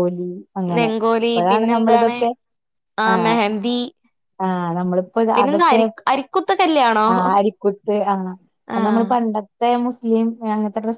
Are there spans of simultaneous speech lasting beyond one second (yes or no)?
no